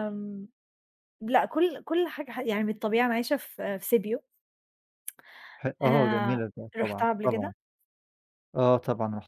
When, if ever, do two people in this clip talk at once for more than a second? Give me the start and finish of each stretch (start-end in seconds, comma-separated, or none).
5.8-7.5